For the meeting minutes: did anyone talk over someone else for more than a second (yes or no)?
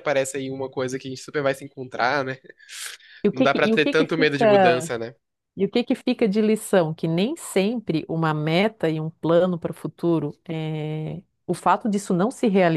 yes